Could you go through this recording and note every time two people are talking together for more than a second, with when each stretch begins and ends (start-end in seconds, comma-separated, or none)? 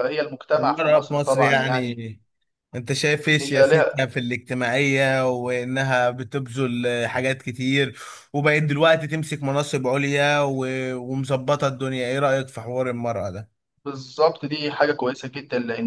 0.6-2.0